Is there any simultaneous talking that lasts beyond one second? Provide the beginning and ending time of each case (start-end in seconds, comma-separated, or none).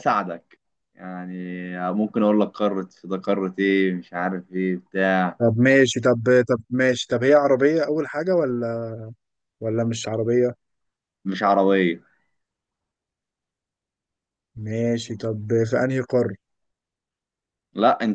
none